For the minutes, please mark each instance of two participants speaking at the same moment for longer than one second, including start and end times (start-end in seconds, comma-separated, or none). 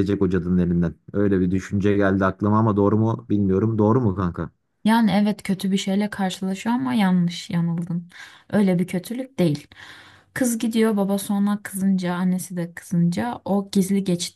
none